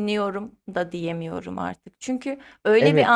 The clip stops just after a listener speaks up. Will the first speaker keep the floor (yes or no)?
yes